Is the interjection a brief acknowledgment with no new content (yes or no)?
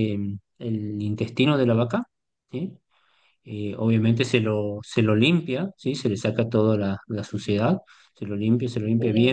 yes